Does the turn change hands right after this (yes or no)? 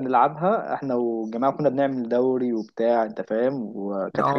no